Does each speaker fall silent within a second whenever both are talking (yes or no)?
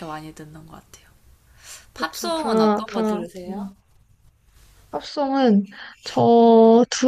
no